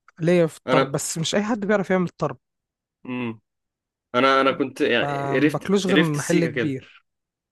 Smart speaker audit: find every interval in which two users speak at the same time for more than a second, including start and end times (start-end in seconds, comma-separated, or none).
5.0-6.8